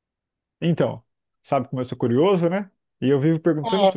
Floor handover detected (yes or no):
no